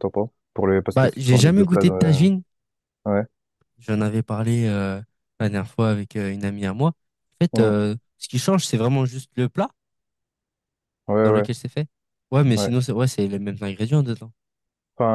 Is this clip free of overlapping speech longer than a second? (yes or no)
no